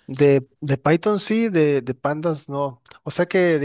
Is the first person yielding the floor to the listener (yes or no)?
no